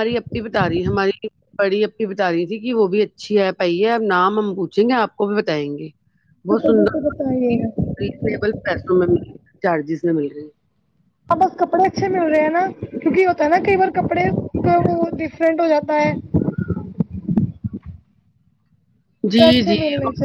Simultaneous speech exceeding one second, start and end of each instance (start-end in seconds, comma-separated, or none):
6.5-7.9